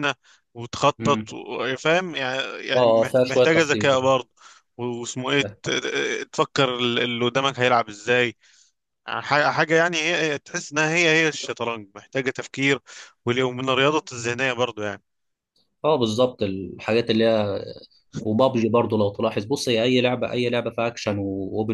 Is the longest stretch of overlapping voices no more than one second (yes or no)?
no